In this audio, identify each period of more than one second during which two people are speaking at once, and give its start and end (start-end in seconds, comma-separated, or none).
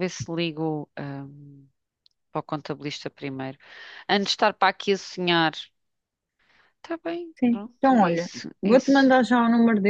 7.4-9.2